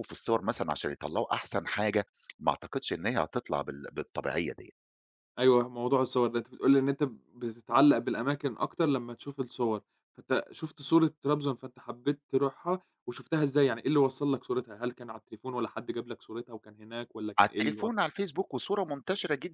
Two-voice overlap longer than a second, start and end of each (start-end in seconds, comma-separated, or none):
none